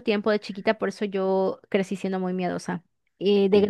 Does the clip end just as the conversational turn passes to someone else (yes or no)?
no